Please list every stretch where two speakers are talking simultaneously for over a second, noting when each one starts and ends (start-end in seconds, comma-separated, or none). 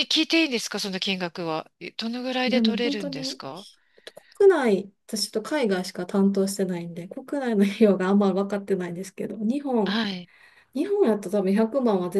2.5-3.7